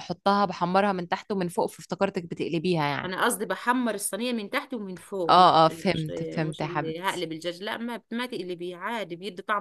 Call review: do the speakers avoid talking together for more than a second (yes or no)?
no